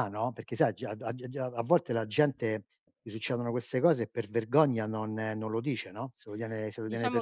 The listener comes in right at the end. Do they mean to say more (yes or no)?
yes